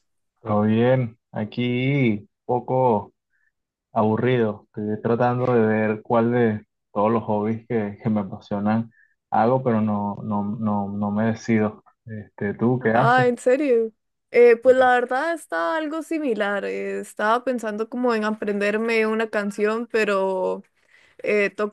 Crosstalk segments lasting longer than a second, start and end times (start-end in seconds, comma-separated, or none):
none